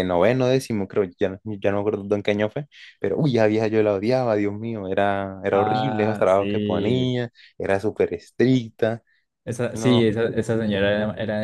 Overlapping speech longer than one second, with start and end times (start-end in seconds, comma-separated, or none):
5.5-7.2